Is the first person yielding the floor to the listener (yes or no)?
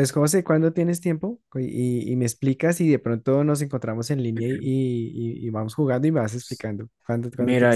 yes